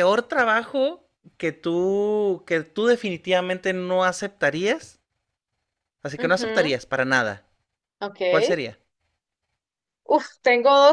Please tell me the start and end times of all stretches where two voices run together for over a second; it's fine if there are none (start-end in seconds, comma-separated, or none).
none